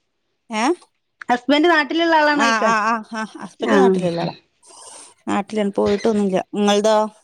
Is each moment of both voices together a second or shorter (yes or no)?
yes